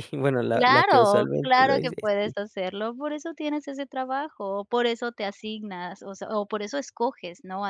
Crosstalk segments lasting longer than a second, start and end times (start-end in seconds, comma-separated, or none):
0.5-2.3